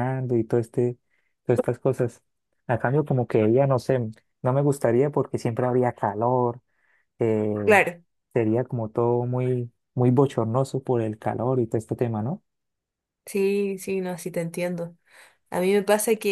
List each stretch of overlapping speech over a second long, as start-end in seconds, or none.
none